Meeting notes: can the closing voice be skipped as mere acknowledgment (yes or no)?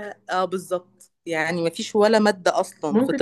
no